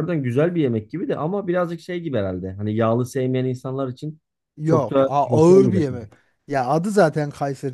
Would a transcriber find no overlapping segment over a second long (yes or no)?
no